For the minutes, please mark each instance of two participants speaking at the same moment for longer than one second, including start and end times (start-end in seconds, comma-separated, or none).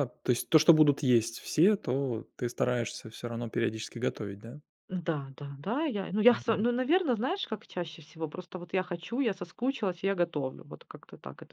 none